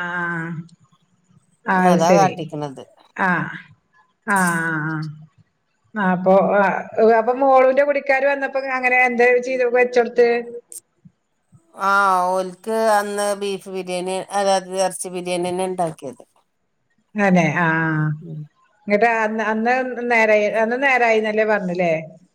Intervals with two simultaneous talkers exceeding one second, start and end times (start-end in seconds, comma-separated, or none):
none